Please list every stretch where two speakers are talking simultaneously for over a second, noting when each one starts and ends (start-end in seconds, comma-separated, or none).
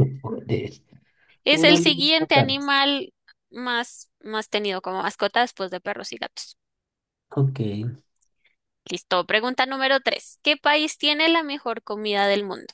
1.5-2.7